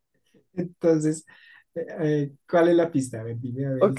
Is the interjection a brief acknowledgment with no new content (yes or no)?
no